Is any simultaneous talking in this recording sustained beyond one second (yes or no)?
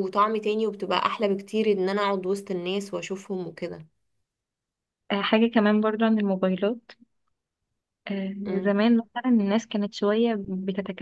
no